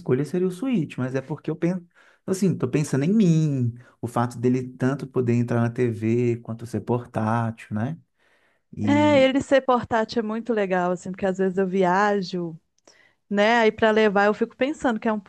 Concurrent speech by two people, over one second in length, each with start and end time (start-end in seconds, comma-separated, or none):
none